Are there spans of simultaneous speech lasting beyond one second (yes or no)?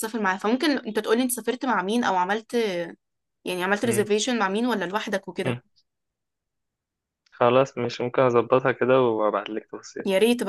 no